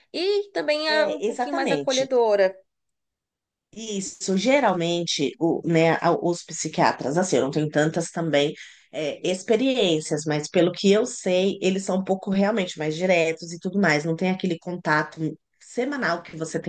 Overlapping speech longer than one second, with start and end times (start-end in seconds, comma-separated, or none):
0.9-2.1